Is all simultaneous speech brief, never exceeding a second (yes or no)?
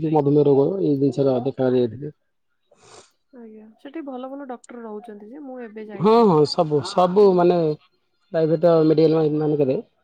yes